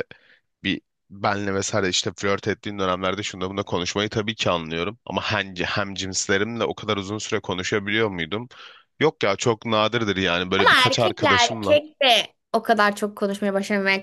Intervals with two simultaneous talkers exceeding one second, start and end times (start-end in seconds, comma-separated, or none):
10.6-11.8